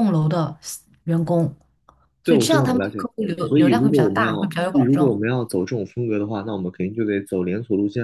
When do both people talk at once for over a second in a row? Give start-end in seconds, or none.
2.2-5.2